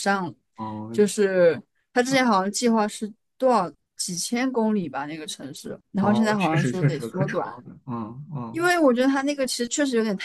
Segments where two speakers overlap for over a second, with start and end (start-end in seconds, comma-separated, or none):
6.0-7.5